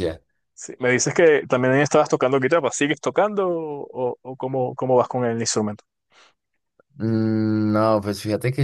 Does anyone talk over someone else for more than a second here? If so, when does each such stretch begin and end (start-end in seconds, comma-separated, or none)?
none